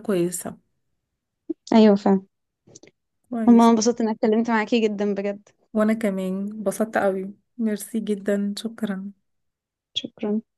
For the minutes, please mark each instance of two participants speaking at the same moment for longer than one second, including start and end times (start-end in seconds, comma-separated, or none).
none